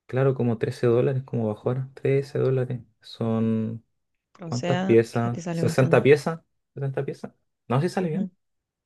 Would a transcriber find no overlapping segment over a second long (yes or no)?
no